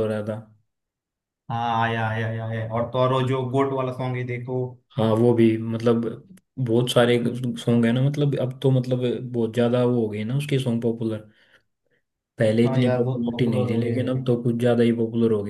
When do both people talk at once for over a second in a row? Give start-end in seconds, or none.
12.6-14.0